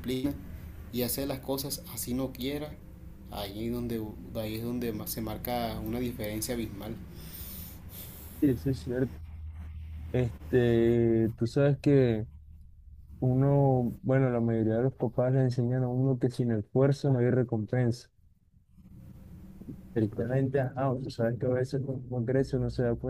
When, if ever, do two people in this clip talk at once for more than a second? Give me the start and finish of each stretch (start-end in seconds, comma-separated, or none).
none